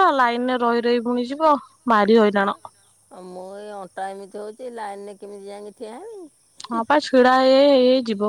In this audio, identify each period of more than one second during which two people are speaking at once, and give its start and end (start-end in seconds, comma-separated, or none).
none